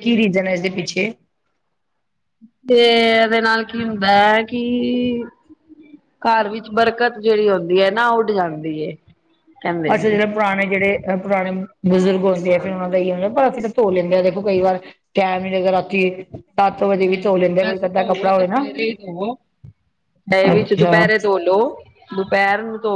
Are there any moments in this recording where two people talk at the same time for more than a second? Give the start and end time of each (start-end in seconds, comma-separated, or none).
17.0-18.6